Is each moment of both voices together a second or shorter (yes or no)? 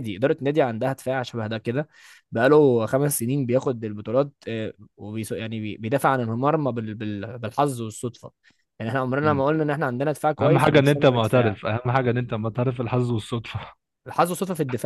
no